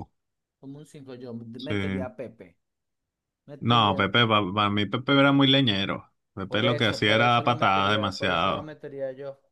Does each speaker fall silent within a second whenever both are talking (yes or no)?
no